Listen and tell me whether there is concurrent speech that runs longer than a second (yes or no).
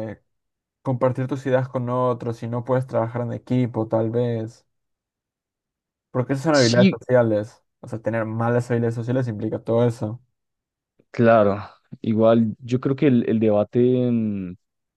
no